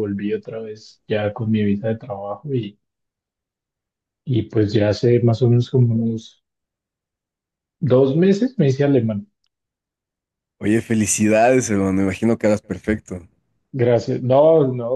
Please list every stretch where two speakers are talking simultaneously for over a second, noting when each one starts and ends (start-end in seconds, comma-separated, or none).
none